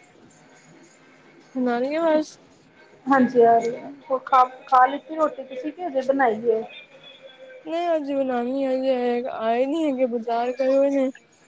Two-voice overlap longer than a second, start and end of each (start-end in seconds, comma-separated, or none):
none